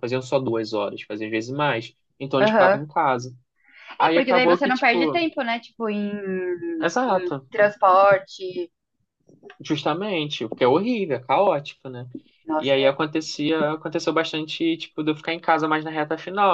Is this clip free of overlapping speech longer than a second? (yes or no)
no